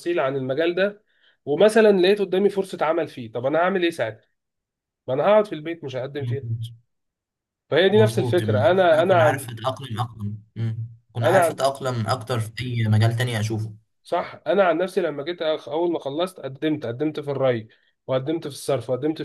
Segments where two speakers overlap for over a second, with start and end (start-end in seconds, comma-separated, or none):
7.9-9.5